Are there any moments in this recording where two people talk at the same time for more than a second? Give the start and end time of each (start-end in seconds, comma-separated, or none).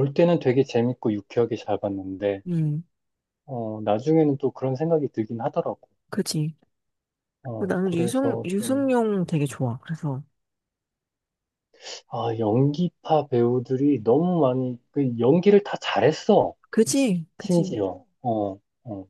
7.6-8.9